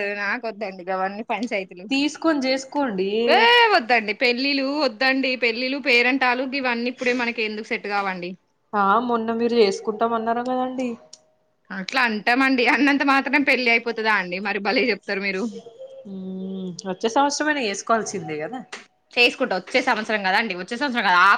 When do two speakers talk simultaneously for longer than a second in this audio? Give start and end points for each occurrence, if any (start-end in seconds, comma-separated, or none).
none